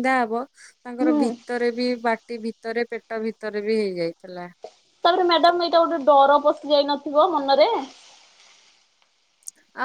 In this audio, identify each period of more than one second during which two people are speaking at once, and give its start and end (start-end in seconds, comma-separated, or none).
none